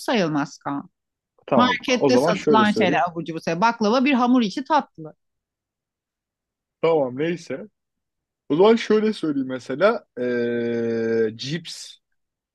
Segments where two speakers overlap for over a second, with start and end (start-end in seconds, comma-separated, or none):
1.6-3.0